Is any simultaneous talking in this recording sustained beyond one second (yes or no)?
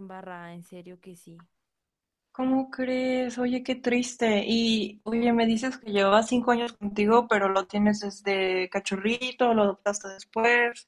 no